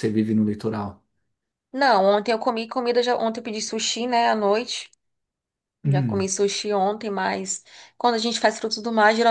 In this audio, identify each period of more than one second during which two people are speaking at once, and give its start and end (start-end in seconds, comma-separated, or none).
none